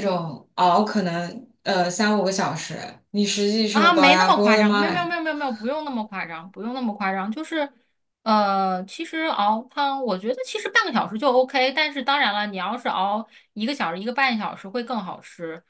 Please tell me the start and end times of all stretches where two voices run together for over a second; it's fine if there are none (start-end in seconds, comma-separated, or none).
3.7-5.1